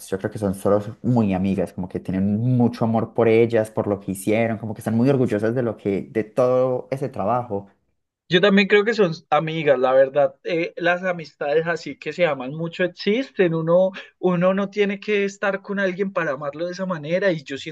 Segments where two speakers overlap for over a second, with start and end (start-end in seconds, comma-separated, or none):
none